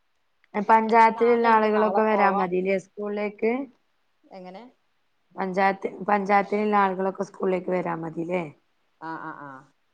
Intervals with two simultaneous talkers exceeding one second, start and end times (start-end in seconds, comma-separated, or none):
0.8-2.7